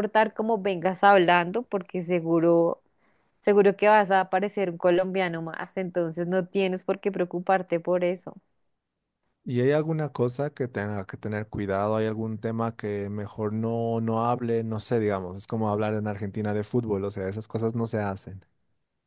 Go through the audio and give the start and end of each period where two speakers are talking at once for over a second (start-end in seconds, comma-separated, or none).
none